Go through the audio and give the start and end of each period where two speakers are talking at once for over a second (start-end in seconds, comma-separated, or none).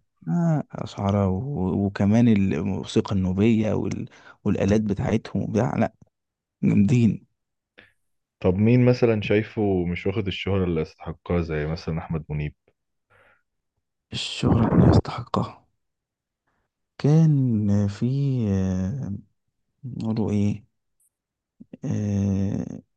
none